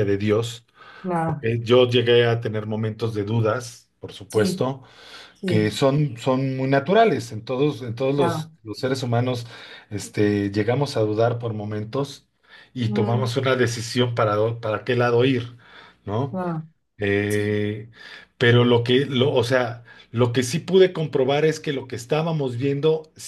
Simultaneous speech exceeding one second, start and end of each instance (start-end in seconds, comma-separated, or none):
none